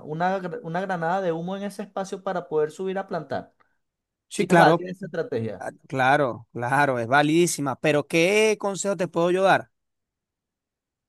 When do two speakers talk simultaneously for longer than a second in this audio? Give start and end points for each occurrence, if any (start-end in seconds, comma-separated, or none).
none